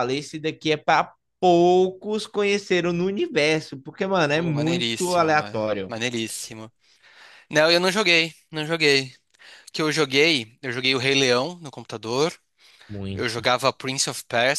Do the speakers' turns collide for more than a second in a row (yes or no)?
yes